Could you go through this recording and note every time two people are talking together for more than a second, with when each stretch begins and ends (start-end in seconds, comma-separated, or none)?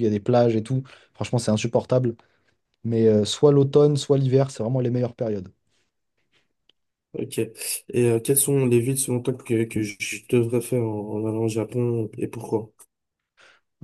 none